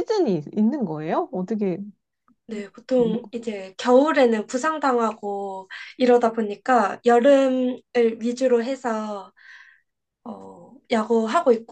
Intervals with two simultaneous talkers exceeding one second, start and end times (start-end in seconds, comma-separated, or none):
none